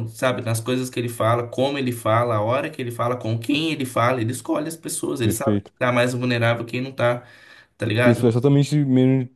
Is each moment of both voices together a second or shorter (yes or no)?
yes